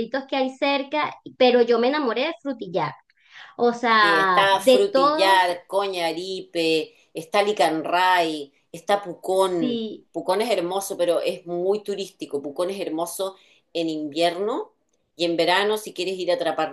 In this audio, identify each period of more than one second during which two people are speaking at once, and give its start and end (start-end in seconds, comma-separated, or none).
4.0-5.5